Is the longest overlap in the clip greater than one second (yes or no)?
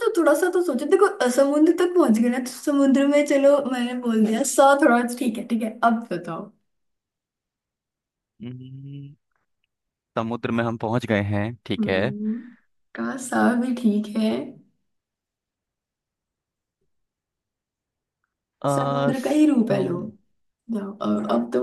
yes